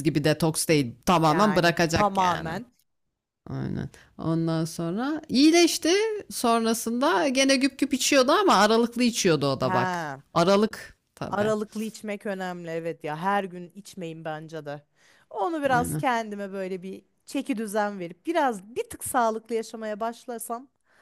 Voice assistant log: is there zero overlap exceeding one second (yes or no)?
no